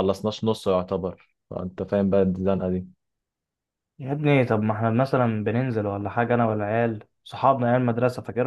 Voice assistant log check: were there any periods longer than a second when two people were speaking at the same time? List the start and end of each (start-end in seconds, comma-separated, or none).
none